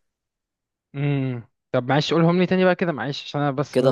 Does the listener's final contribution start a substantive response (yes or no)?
yes